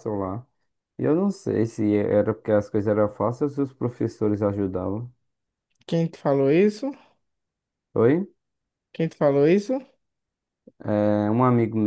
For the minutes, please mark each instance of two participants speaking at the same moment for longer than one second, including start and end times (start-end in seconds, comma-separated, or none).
none